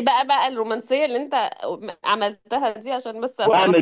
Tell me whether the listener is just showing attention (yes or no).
no